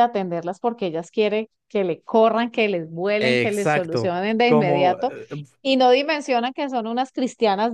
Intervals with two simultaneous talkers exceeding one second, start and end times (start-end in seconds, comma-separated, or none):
3.2-5.1